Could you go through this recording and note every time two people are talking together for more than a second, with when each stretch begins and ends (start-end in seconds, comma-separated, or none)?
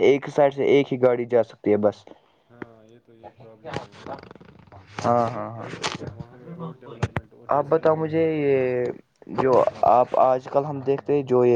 none